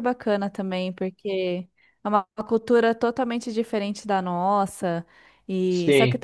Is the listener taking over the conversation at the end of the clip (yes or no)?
no